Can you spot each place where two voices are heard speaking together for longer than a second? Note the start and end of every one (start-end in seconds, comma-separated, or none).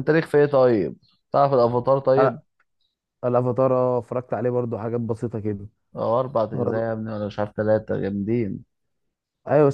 none